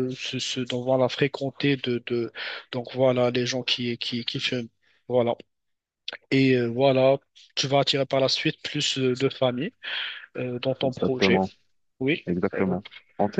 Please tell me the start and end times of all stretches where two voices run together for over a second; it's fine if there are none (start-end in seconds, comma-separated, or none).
none